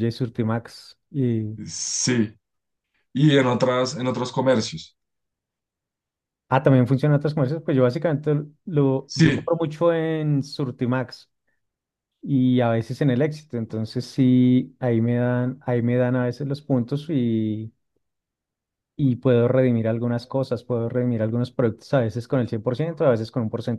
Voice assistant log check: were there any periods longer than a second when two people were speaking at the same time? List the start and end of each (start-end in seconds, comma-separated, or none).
none